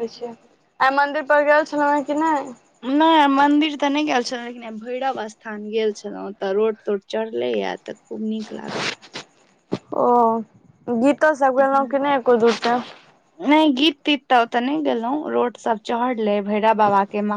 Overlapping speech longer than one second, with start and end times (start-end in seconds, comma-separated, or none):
none